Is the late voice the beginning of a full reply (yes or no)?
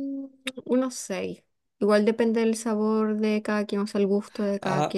yes